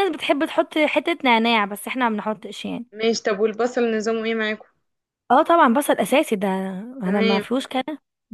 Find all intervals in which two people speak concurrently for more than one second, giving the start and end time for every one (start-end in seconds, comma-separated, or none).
none